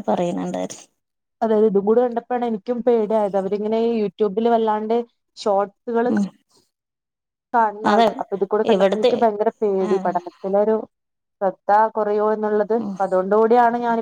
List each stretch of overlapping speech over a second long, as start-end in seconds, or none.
none